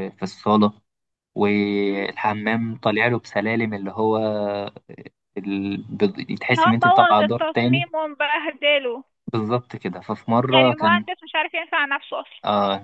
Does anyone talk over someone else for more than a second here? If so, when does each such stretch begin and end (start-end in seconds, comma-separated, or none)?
6.5-7.8